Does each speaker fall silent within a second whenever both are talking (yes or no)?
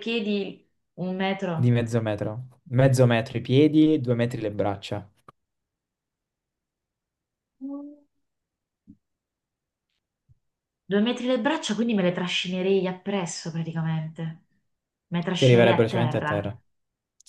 no